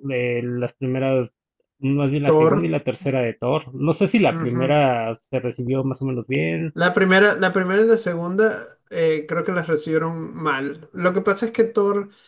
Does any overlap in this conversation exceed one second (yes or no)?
no